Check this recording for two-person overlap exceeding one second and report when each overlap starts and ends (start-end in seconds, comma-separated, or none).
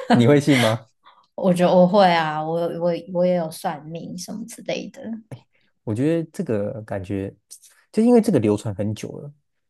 none